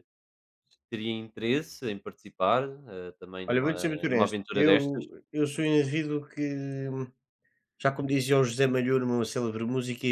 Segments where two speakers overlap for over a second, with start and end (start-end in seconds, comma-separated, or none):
3.5-5.0